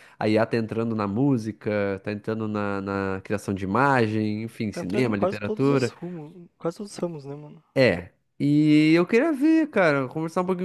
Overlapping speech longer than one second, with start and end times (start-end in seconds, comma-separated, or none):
4.7-5.9